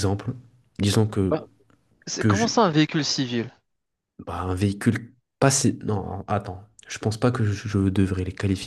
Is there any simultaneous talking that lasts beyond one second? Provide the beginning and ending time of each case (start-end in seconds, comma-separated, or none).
none